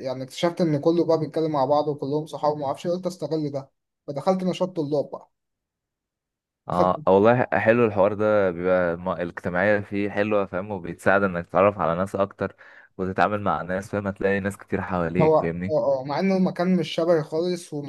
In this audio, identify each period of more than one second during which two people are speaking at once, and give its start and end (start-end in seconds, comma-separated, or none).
none